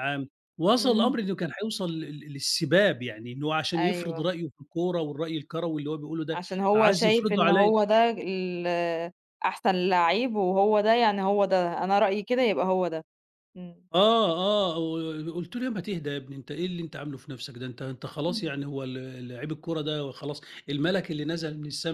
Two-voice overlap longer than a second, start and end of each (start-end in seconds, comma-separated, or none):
6.3-7.7